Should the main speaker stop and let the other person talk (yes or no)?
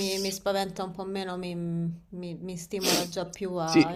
yes